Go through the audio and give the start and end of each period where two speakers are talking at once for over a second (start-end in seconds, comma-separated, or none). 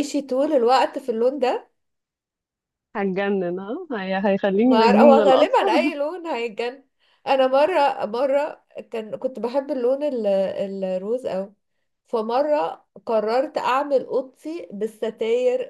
4.7-5.9